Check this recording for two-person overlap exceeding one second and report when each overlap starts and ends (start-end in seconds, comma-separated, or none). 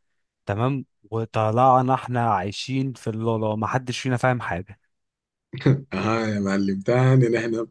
none